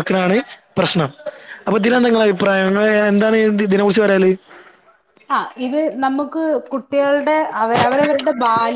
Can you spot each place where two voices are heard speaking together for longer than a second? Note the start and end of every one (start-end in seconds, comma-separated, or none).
none